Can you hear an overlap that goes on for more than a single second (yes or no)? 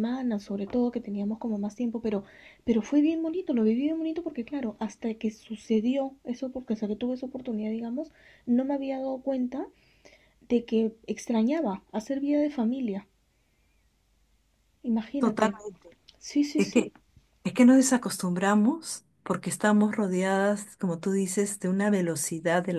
no